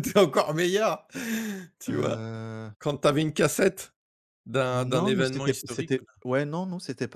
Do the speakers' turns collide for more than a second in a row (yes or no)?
yes